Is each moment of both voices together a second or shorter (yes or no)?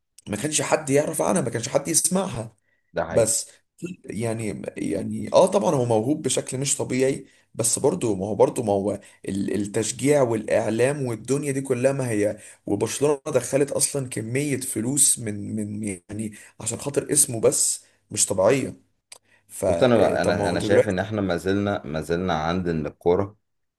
no